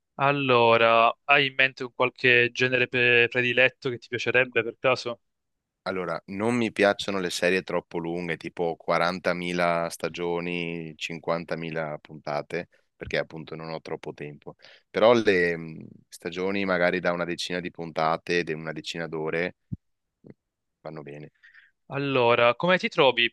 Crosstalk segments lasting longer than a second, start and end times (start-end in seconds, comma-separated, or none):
none